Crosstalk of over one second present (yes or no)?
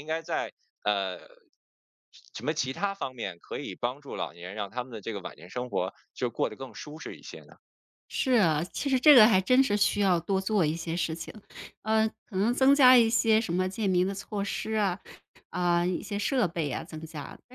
no